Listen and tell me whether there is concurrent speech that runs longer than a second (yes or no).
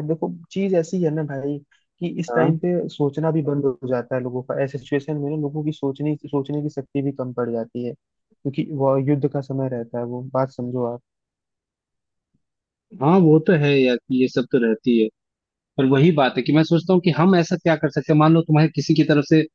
no